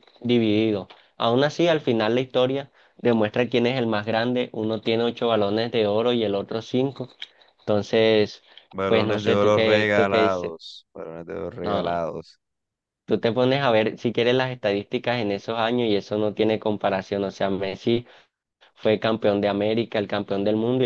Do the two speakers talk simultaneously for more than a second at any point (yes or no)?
yes